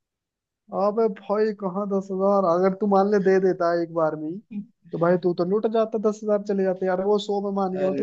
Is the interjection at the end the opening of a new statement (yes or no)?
no